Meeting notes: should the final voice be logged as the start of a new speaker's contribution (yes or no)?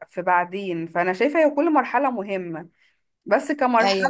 no